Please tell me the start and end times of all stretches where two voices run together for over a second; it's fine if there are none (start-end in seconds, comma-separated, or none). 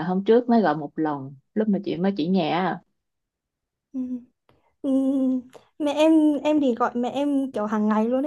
none